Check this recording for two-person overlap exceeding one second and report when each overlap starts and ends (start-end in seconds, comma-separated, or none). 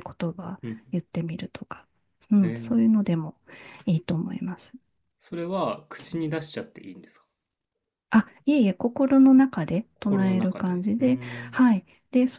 9.9-11.7